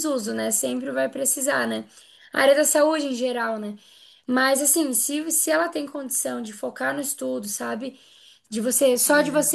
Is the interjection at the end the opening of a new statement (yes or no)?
no